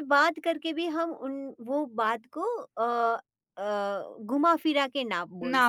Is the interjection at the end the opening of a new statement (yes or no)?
yes